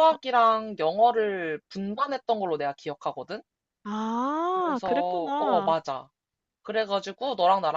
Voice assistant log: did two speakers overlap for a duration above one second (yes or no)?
yes